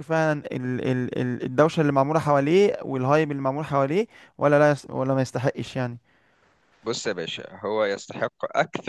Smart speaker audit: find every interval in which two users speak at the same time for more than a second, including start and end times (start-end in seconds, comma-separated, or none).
none